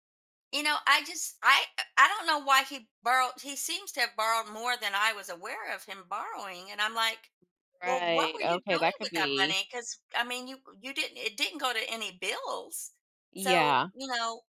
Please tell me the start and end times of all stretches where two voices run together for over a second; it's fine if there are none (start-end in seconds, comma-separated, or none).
7.8-9.6